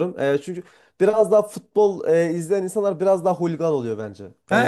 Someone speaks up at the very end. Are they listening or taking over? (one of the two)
taking over